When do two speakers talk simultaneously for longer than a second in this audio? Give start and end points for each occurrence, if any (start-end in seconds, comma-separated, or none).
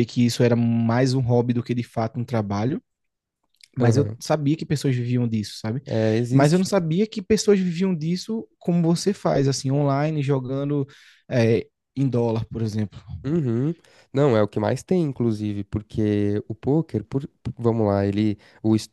none